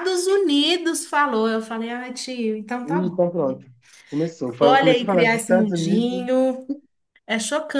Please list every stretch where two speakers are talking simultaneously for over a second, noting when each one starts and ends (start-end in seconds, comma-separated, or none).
4.6-6.2